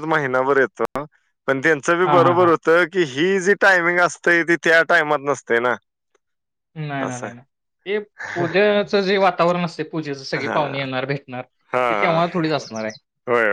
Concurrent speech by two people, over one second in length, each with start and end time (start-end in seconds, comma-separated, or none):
none